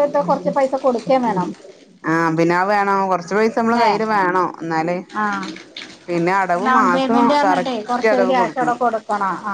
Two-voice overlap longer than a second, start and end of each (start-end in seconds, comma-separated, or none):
6.6-8.7